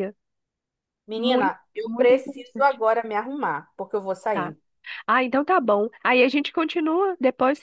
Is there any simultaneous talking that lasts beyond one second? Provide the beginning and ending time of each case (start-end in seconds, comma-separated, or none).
1.2-2.8